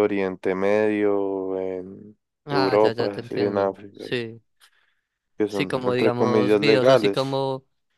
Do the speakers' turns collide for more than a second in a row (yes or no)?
yes